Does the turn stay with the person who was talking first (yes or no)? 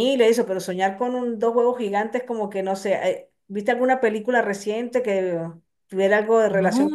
no